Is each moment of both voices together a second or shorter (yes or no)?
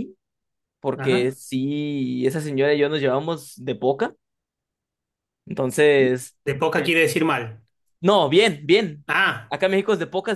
yes